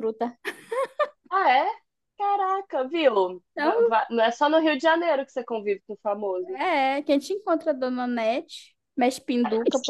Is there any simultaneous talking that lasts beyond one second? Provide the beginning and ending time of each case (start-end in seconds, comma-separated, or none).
none